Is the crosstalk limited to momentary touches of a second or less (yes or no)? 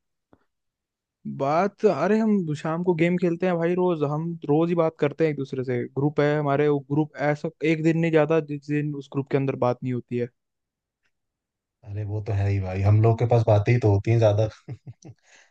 yes